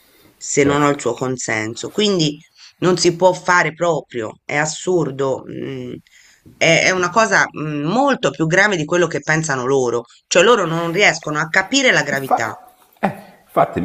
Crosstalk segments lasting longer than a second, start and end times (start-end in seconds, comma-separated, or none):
none